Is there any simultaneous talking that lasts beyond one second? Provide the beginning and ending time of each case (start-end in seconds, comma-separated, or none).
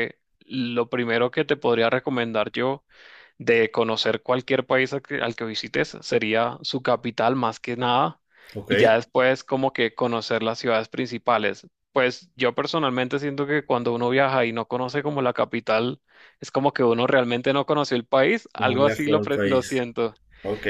18.6-19.9